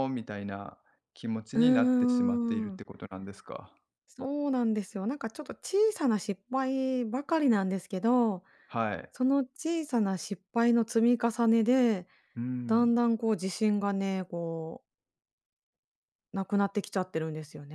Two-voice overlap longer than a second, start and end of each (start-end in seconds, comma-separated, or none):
1.6-2.8